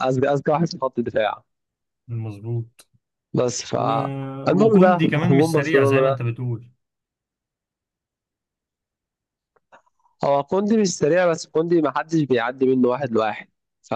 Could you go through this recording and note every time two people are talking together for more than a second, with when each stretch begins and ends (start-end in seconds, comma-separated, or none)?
4.5-6.2